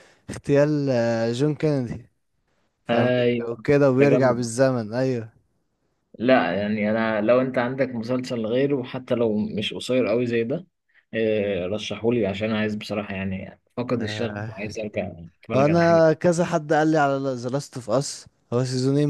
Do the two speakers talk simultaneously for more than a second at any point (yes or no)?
yes